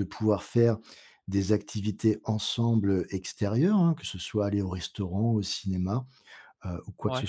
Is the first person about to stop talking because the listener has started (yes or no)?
no